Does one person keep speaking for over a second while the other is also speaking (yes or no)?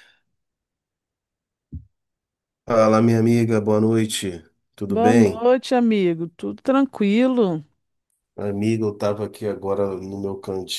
no